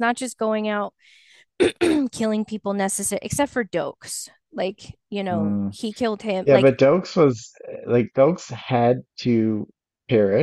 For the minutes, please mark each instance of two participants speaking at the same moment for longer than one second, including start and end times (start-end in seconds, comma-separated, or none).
none